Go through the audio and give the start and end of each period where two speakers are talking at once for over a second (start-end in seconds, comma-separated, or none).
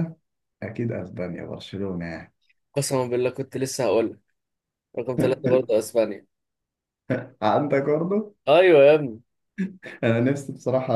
none